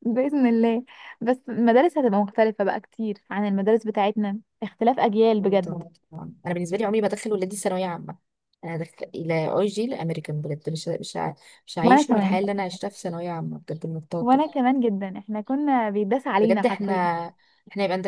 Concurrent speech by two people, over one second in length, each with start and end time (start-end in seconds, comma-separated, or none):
none